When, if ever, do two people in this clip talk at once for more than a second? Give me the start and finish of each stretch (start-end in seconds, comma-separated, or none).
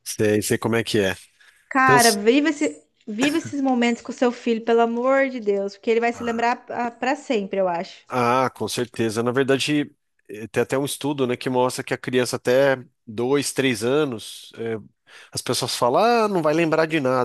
none